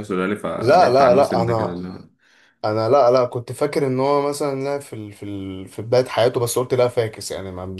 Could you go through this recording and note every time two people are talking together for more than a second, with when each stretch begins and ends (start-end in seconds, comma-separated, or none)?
0.6-1.8